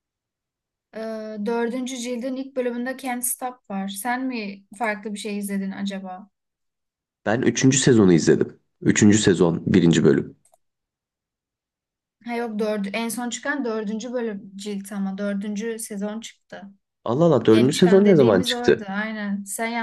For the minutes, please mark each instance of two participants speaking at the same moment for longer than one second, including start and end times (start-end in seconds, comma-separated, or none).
17.5-18.9